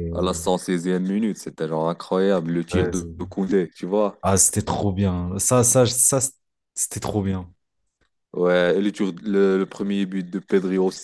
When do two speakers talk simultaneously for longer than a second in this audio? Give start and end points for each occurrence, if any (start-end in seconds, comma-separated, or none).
none